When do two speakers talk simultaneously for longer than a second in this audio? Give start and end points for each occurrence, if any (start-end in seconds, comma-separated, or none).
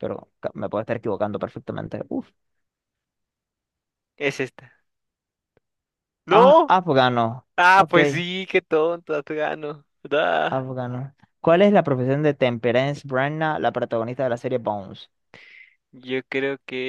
none